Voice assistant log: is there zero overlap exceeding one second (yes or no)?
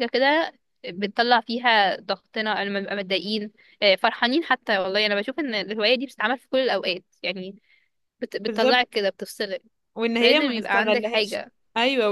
no